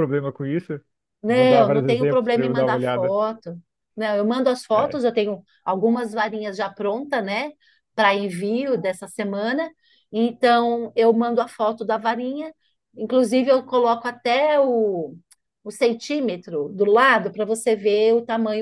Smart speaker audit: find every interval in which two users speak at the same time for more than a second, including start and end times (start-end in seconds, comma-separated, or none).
1.3-3.1